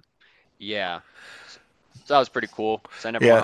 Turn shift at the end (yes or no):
no